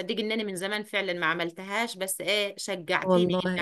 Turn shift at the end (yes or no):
no